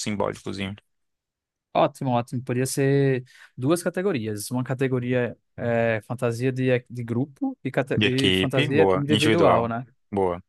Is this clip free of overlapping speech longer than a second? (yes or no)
no